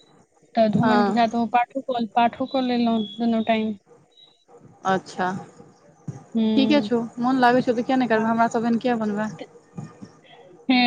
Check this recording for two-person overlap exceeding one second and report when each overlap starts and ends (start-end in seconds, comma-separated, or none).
none